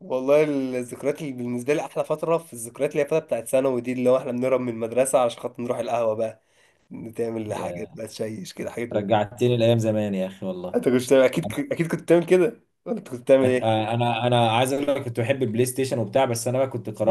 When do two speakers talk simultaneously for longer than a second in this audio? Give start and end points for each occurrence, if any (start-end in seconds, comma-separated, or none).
none